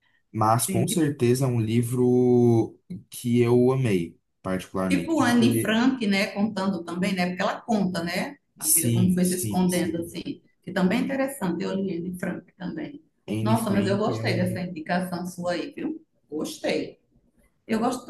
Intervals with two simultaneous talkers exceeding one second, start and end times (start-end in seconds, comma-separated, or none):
8.6-10.2, 13.4-14.6